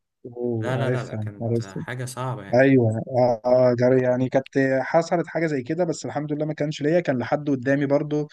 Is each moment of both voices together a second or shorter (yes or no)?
no